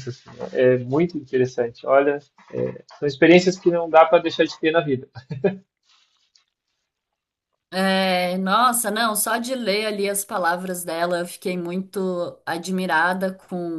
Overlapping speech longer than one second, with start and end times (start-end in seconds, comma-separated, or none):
none